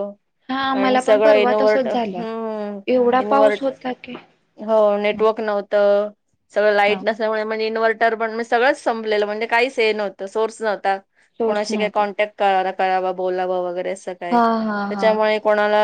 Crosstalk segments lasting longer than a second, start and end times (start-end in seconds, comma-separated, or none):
0.8-2.2